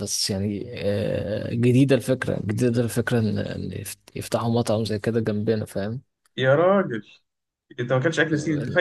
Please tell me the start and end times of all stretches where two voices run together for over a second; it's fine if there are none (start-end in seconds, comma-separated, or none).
none